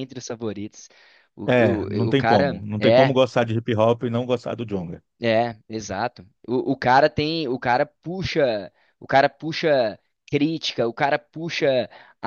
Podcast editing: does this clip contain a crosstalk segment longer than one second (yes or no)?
yes